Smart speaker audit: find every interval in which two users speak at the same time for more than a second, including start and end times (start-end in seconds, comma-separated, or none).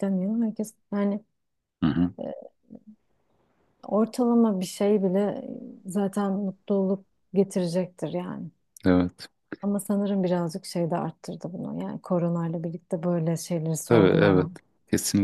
none